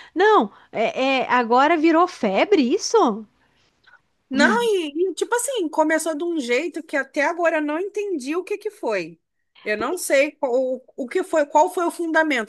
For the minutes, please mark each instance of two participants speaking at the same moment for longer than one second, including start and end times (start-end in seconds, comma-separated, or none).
none